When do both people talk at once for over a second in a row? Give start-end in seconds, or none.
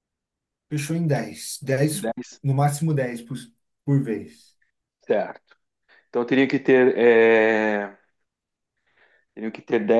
none